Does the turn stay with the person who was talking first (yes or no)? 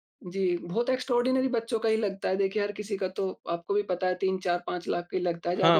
no